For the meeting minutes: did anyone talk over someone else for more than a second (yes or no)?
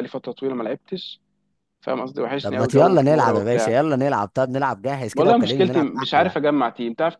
yes